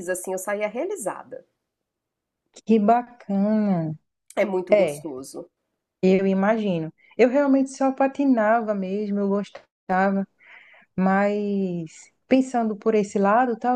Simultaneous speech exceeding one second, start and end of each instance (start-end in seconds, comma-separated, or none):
none